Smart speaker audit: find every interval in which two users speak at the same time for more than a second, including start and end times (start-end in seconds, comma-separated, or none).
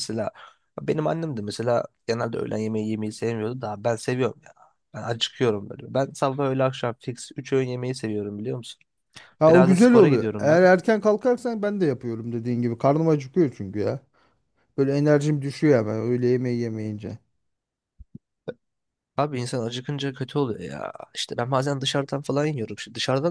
9.5-10.7